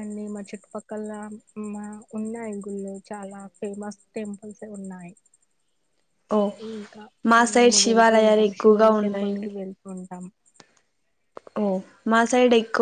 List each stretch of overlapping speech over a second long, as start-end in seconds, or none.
7.6-9.5